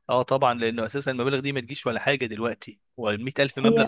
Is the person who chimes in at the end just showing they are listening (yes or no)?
yes